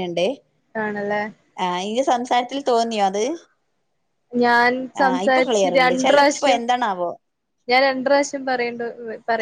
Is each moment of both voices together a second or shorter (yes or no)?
no